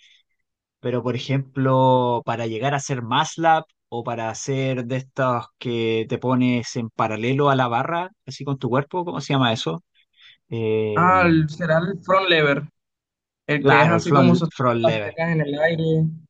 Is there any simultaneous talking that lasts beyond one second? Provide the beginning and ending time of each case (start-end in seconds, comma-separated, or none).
13.6-15.2